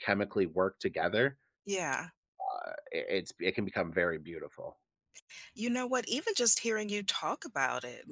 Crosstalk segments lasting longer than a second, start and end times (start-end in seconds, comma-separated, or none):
none